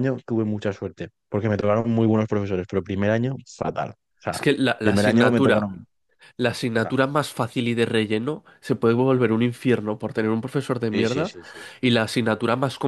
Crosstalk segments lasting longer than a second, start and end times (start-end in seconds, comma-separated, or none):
4.3-5.8